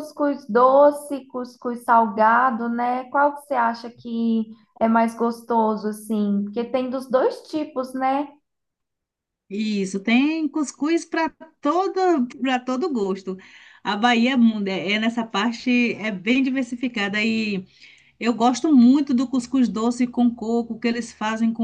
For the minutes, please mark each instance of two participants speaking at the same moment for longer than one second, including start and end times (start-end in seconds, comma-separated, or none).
none